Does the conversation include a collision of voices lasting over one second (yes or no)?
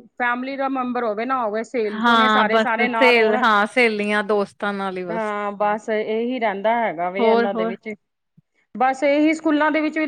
yes